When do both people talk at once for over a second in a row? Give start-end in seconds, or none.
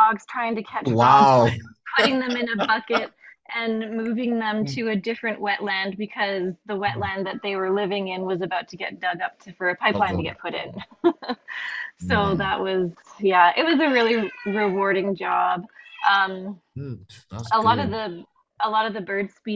none